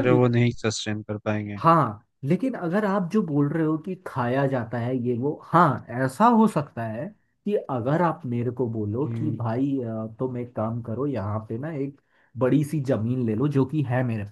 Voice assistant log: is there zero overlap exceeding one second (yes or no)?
yes